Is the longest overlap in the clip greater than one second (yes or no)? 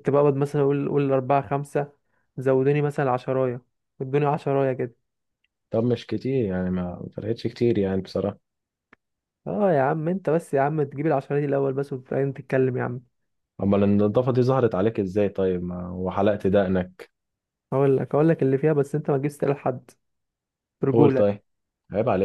no